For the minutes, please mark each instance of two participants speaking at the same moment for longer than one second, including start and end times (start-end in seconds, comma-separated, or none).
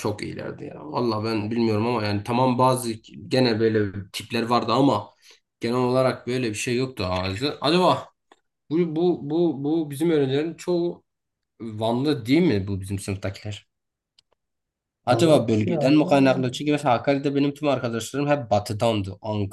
15.1-16.4